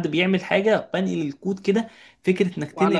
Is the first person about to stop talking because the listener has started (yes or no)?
no